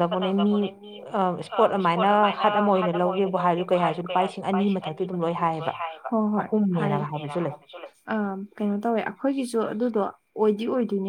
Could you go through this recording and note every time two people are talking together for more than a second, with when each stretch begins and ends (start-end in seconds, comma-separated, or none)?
none